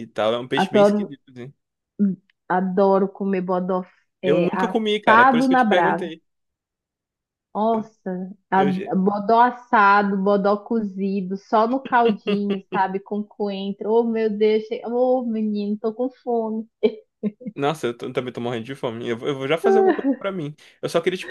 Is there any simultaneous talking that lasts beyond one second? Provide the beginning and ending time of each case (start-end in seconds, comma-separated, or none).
4.2-6.1